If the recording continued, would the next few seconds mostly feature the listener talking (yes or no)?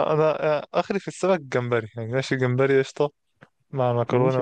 no